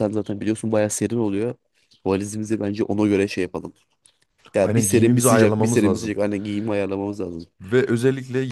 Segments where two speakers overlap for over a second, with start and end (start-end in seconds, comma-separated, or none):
4.6-6.1